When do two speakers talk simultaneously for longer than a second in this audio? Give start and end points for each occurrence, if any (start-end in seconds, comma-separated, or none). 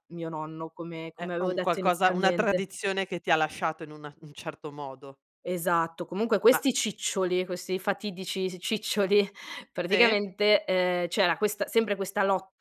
1.2-2.6